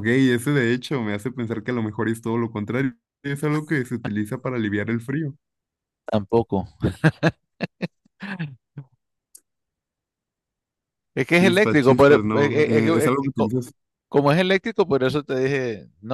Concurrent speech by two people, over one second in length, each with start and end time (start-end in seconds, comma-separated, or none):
11.3-13.5